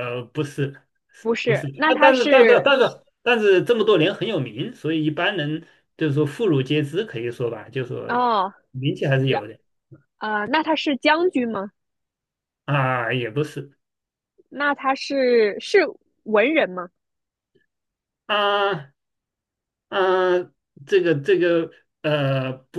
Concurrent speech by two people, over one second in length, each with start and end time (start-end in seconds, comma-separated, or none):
1.4-2.7